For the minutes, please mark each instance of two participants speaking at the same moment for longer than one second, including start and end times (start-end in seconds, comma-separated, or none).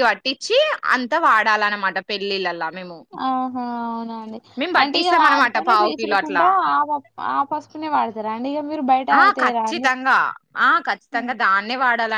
4.8-6.5